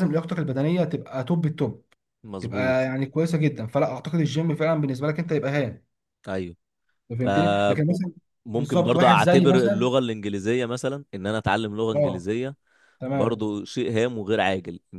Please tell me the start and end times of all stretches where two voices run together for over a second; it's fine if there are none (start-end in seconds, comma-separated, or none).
8.5-9.9